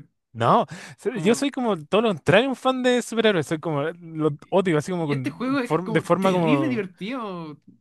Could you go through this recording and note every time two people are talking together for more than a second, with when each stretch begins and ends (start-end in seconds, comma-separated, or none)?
5.0-6.8